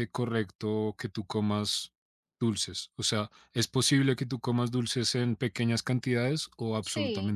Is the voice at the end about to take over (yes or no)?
yes